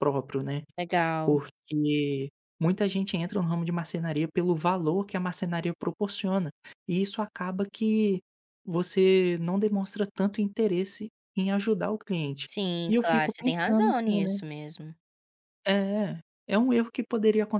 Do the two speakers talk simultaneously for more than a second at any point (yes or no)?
yes